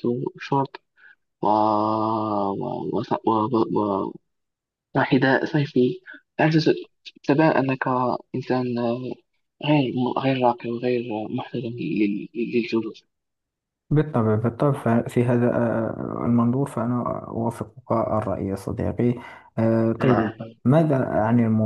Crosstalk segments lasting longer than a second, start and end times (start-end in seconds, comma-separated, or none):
none